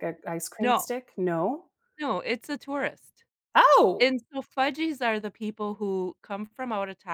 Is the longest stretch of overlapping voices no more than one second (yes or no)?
yes